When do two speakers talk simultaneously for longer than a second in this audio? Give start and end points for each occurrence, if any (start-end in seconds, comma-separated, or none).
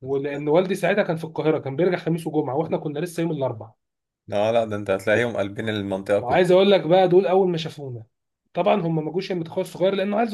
none